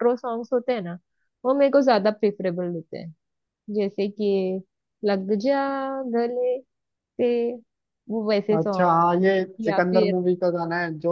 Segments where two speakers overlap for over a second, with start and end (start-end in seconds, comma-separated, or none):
none